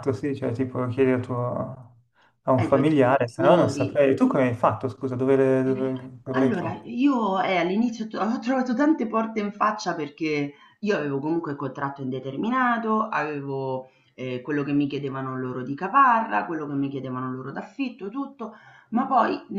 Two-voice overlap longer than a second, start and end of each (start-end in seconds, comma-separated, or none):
2.6-3.9